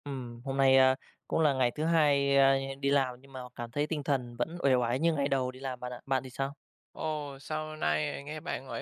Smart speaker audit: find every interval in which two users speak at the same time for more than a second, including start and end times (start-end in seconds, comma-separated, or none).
none